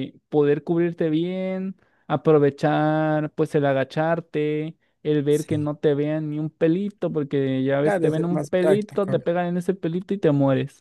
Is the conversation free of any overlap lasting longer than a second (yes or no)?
no